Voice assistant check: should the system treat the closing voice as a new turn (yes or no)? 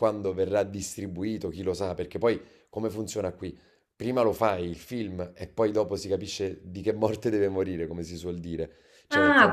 yes